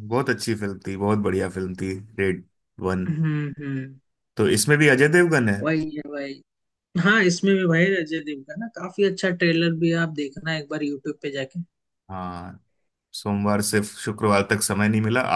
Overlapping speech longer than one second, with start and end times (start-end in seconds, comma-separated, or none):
none